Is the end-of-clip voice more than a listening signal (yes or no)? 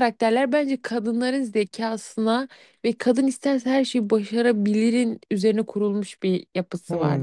yes